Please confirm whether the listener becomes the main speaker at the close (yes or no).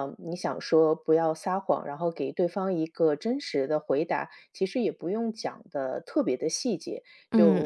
no